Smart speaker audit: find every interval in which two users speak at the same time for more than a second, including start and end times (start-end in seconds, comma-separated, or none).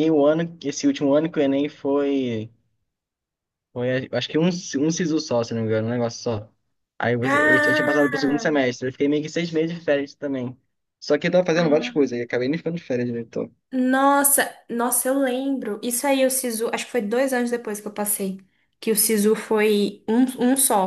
7.2-8.6